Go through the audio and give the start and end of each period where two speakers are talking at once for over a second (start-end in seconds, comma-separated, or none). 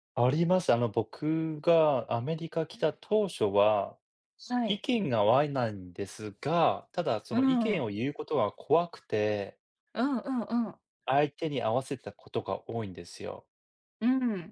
none